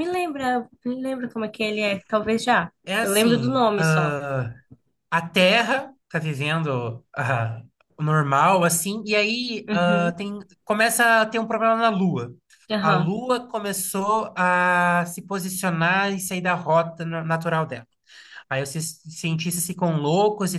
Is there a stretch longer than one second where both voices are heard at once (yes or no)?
yes